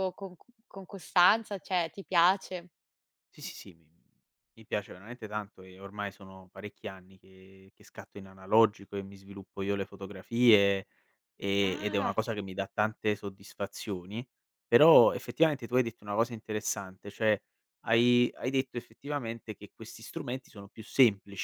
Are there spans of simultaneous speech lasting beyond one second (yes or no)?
no